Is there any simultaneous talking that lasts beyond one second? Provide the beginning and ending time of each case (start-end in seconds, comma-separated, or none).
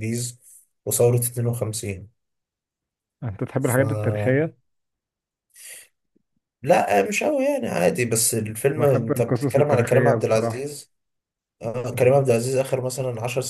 8.8-10.7